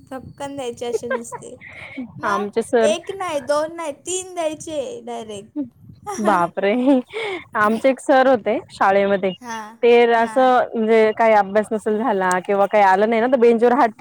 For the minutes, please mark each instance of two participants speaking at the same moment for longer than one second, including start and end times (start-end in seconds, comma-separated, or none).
none